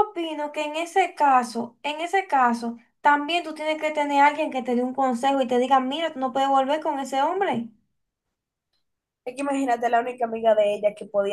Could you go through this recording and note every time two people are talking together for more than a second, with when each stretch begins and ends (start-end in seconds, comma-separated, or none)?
none